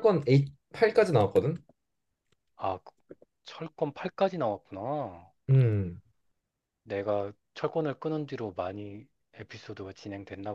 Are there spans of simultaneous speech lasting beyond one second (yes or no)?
no